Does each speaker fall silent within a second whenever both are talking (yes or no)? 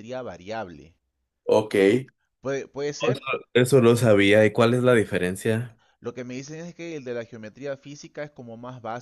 yes